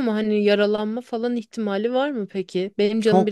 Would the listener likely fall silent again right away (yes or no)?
no